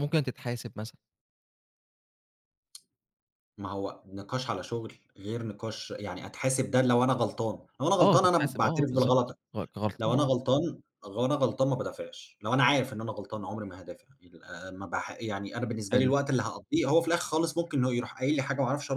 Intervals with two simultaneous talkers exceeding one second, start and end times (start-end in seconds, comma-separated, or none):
8.0-9.4